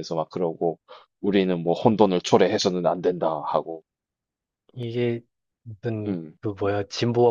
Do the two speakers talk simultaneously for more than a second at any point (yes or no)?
no